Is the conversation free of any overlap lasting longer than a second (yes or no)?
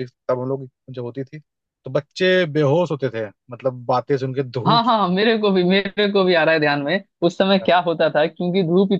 yes